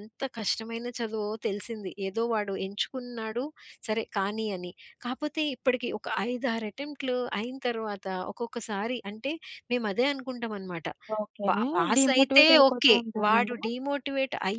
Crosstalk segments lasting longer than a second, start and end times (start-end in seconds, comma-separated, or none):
11.9-13.5